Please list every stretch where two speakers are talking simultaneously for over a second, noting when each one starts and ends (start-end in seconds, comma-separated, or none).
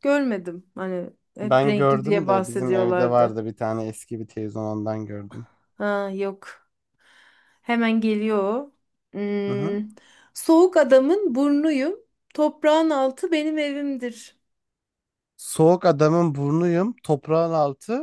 1.4-3.4